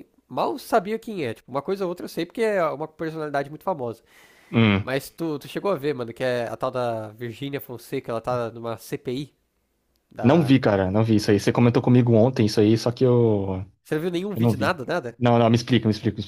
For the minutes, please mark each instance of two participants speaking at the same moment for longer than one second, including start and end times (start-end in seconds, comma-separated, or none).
none